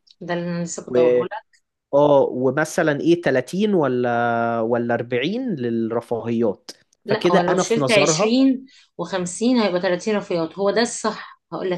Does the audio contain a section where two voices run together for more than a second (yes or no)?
yes